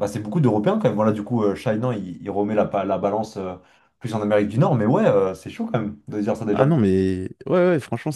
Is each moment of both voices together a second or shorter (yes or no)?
yes